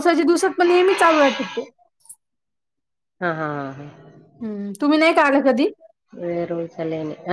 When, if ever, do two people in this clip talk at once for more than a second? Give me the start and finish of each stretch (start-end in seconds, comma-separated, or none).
none